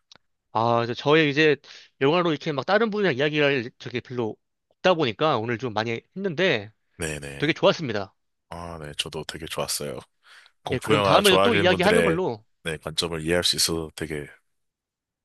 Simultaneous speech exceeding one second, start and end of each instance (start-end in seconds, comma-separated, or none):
10.7-12.2